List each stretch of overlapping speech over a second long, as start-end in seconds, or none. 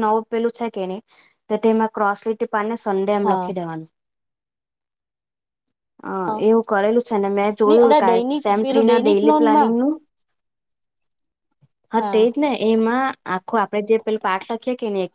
7.7-9.7